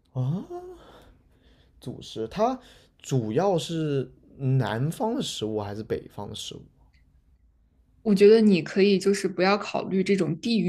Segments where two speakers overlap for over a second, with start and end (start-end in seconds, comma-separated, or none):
none